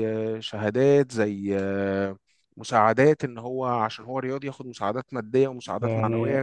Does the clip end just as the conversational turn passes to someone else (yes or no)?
no